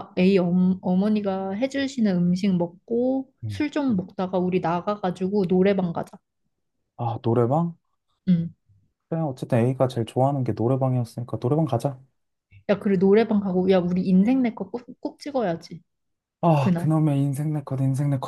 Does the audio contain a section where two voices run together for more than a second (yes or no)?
no